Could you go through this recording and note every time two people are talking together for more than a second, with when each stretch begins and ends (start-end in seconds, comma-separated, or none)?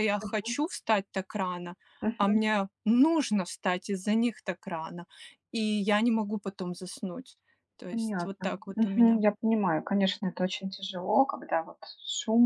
7.9-9.2